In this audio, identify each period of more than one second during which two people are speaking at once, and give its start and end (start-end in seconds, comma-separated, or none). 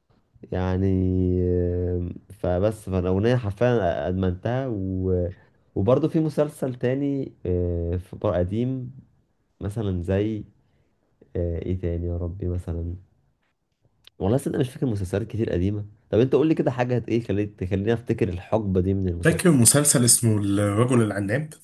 none